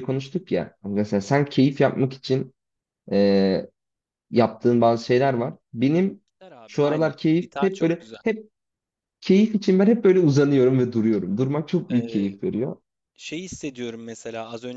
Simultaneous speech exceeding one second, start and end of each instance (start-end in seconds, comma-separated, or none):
6.7-8.2